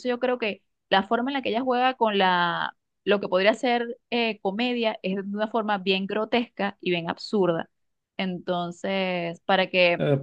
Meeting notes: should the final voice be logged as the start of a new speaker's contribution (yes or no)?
yes